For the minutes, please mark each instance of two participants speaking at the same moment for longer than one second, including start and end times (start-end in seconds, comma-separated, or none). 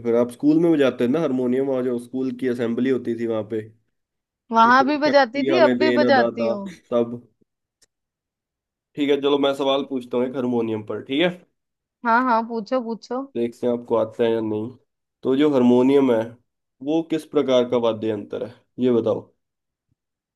4.7-6.5